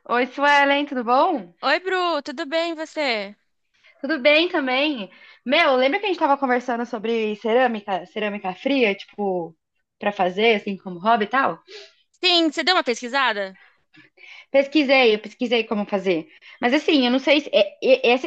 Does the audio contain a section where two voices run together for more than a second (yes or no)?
no